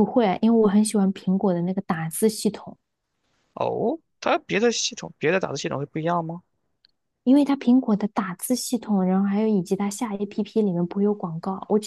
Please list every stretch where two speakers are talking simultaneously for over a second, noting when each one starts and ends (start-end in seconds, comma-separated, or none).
none